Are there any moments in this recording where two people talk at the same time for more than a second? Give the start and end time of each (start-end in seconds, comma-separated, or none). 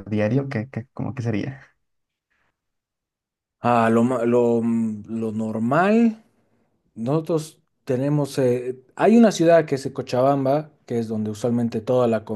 none